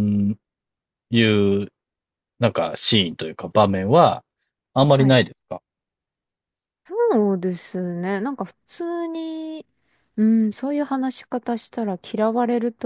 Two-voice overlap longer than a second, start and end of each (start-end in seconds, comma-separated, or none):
none